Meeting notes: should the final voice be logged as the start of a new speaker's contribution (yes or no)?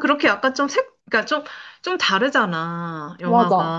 no